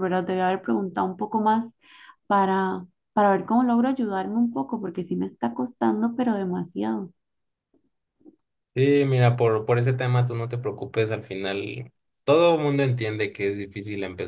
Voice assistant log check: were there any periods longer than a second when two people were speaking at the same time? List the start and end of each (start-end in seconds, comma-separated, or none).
none